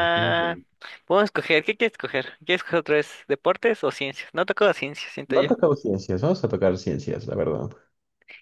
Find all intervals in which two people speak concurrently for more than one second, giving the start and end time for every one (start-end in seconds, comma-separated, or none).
none